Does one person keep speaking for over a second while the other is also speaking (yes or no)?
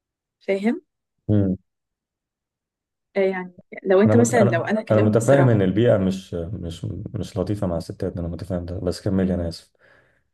yes